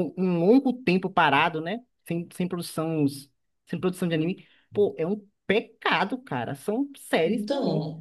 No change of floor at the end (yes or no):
no